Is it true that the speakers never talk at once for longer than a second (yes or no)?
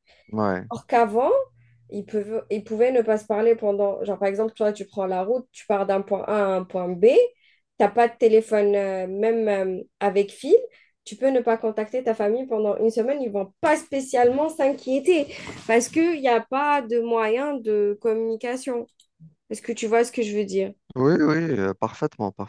yes